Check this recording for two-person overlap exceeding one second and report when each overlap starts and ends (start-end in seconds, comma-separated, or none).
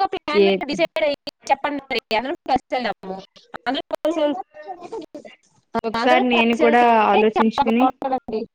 6.0-7.8